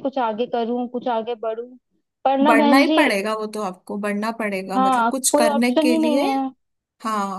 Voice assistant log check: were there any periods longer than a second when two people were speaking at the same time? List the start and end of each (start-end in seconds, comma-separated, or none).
4.8-6.2